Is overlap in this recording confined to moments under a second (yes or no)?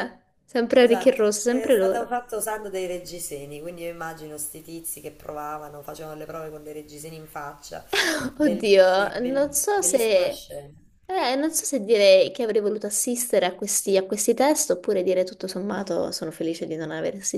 no